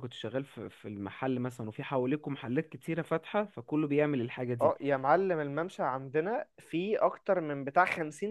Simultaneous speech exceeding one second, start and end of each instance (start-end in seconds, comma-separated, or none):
none